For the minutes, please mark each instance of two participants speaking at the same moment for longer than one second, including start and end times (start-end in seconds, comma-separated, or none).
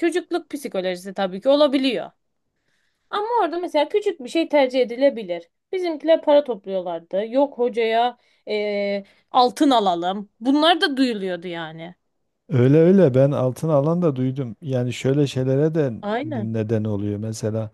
none